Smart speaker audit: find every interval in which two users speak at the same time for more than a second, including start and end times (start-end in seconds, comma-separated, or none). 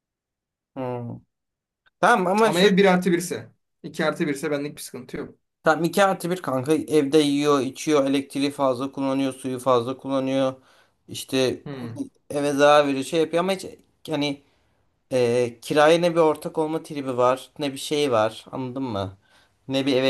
none